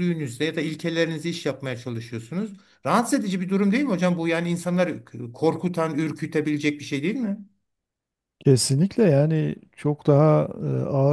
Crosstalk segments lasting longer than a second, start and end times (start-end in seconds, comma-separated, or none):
none